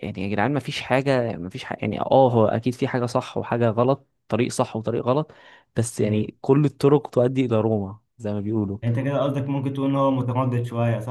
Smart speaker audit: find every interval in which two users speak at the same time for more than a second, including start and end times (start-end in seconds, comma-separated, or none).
none